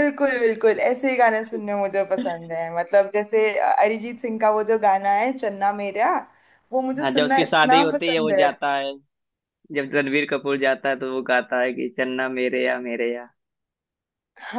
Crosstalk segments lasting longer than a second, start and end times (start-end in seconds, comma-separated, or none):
7.0-8.5